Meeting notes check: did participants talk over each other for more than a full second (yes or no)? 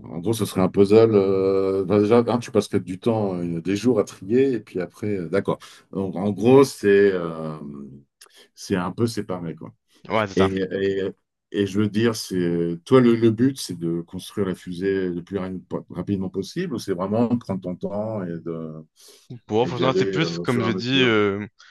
yes